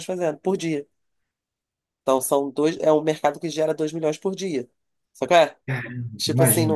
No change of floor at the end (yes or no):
yes